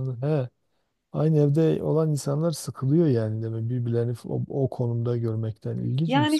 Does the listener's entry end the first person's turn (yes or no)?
yes